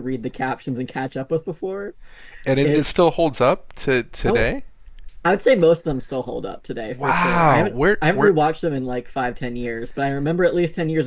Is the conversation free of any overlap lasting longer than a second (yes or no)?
no